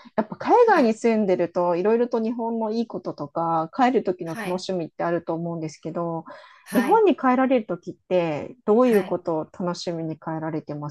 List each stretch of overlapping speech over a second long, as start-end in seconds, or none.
none